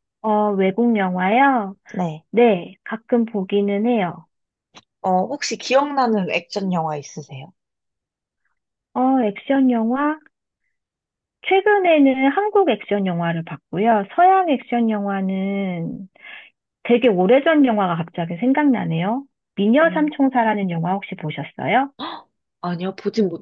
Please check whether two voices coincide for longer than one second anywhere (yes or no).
no